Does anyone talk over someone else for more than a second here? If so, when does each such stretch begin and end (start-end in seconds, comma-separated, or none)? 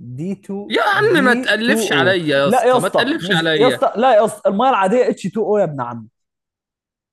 0.7-3.8